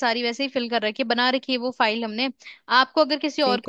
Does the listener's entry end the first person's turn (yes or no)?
no